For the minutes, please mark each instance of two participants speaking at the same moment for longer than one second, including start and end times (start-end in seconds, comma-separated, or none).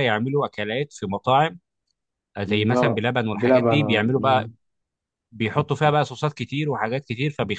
2.5-4.5